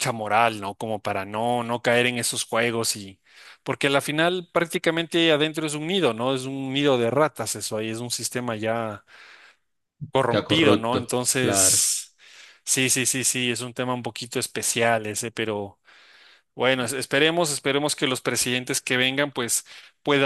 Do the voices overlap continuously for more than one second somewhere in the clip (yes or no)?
yes